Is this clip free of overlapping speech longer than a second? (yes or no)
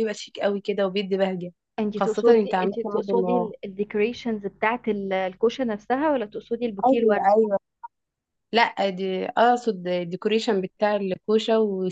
no